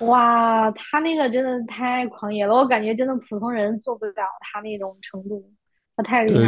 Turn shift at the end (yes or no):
yes